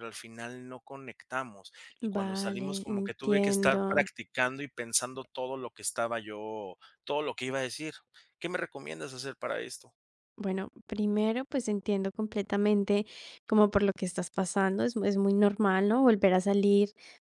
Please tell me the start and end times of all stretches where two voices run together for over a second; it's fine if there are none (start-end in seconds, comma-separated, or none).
2.0-4.0